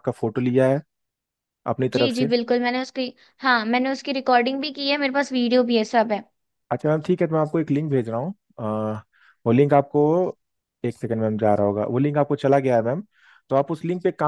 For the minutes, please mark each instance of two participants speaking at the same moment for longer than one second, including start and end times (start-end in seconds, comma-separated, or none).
none